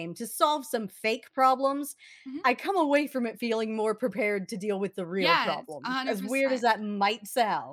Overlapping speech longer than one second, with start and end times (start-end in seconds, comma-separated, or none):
5.2-6.6